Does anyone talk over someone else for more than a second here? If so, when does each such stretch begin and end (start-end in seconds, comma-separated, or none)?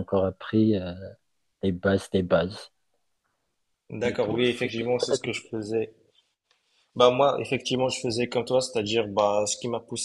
4.0-5.5